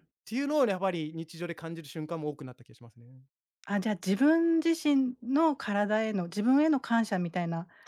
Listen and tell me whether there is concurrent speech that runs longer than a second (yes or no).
no